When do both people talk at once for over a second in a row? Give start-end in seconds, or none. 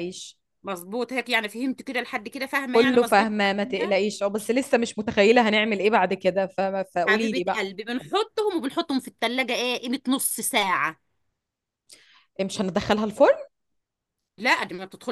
2.7-4.0